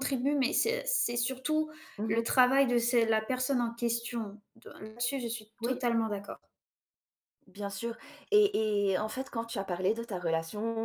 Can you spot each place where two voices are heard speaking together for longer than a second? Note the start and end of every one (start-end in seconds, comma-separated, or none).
none